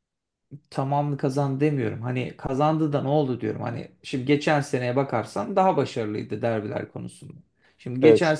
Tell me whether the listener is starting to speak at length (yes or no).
no